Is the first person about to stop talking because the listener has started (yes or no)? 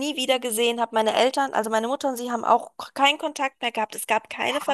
yes